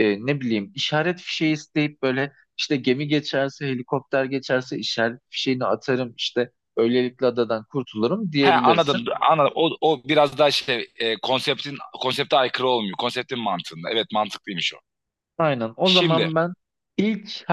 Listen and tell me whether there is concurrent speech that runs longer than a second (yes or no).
no